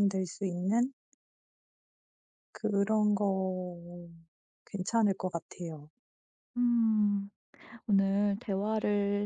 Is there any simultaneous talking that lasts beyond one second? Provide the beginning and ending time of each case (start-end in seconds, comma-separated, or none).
none